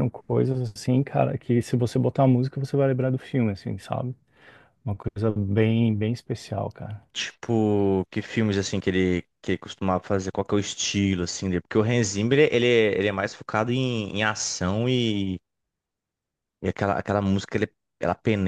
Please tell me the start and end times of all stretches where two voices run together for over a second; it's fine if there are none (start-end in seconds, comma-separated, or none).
none